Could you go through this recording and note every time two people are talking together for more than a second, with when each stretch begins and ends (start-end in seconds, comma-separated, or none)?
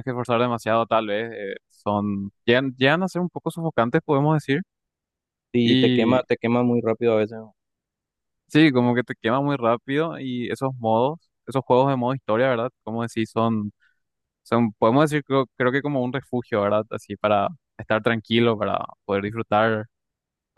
none